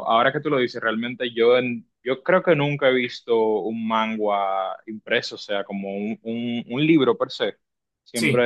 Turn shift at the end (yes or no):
no